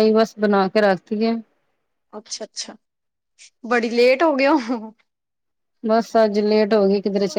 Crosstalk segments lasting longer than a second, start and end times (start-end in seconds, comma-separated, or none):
none